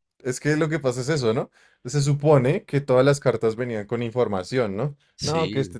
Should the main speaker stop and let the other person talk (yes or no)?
no